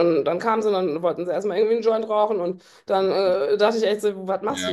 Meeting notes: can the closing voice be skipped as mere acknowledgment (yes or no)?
yes